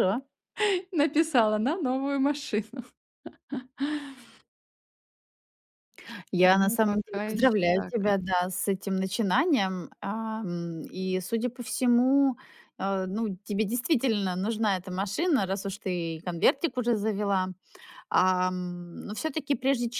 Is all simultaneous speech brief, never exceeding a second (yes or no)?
no